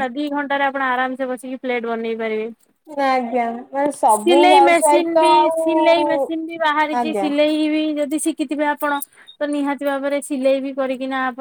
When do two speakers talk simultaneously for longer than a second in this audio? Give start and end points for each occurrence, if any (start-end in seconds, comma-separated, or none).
4.4-6.2